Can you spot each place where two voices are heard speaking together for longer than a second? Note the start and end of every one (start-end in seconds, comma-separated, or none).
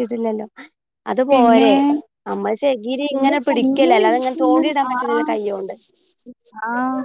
3.1-5.2